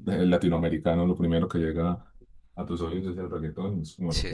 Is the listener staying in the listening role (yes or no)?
yes